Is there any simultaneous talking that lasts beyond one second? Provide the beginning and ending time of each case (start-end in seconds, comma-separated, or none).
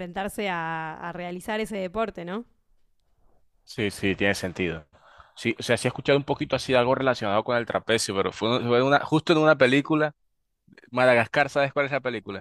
none